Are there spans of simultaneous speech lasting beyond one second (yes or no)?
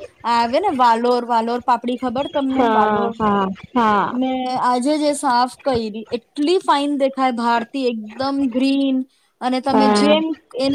no